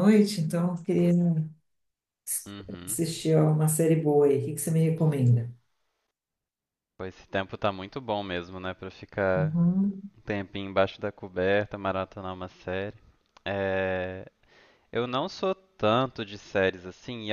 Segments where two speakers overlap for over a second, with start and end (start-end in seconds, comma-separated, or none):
none